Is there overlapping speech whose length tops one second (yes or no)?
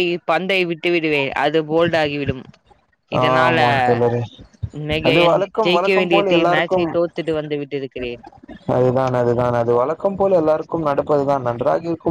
yes